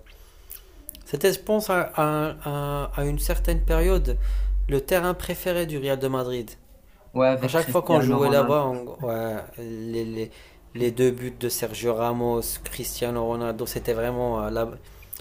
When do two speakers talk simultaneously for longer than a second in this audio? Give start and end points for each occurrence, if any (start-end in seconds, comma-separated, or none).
7.4-8.7